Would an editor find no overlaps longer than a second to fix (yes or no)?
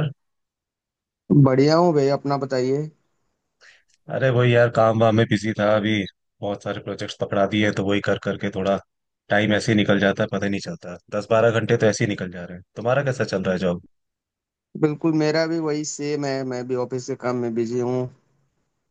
yes